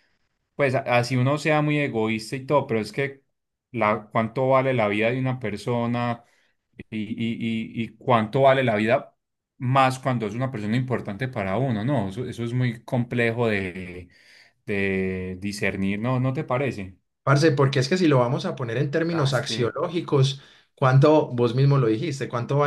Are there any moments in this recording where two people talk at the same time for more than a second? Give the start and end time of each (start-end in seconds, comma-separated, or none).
none